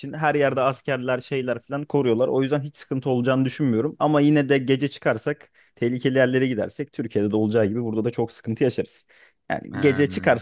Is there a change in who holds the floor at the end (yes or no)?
no